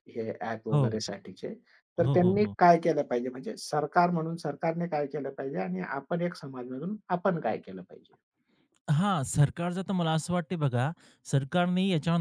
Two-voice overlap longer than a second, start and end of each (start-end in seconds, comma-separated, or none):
none